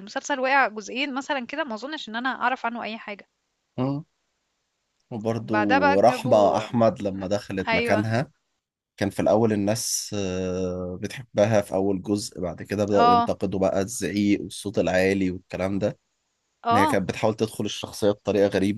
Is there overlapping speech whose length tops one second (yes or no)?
yes